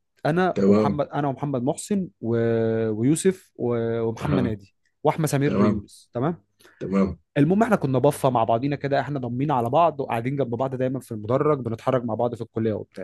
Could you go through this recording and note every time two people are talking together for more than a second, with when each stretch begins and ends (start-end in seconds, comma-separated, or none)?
none